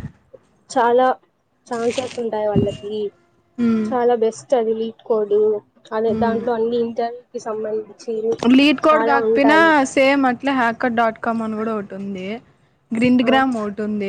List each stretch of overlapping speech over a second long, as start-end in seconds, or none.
none